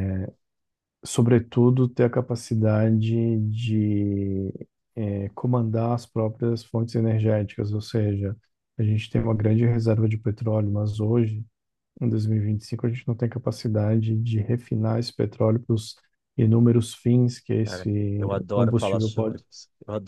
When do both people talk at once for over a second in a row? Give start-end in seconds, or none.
17.6-19.4